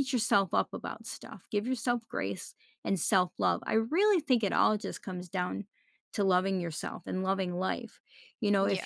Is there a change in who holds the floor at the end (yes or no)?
no